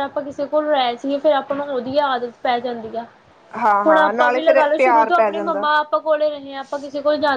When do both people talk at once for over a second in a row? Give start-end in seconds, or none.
3.9-5.7